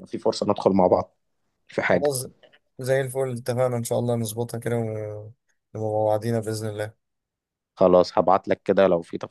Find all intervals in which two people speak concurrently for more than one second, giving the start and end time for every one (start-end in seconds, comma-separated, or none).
none